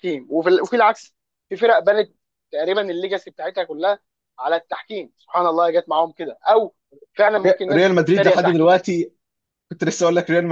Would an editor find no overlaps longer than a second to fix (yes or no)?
no